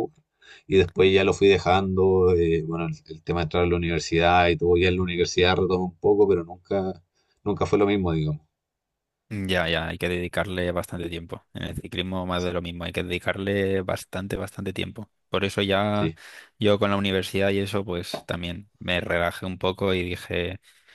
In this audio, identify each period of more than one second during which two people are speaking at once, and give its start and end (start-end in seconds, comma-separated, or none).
none